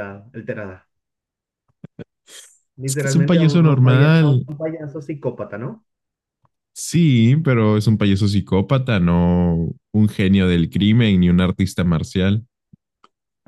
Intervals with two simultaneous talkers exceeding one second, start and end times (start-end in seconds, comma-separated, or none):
2.9-4.5